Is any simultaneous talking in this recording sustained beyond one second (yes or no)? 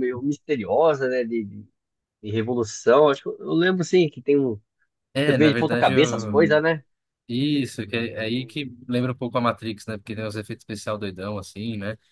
yes